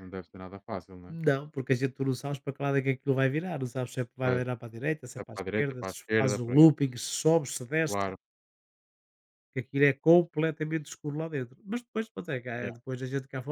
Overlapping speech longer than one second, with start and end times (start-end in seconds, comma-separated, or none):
5.2-6.7